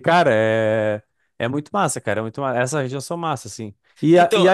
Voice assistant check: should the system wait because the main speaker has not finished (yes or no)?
yes